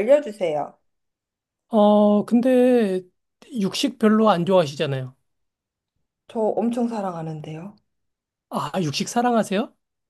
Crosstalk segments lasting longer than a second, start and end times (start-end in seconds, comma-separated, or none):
none